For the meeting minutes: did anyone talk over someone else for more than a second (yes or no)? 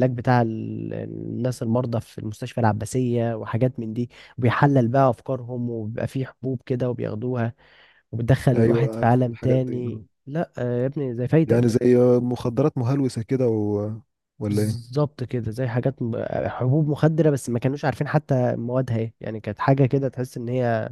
yes